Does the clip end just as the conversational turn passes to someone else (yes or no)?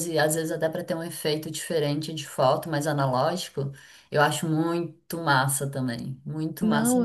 yes